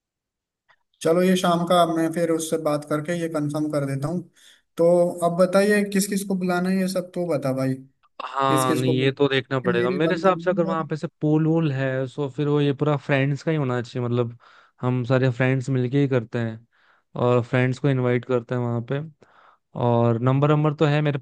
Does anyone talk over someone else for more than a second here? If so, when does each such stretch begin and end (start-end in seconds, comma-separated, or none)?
8.5-10.9